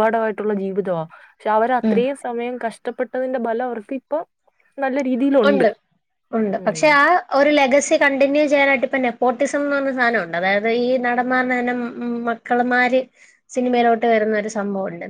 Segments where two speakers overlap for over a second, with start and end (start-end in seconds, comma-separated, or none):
none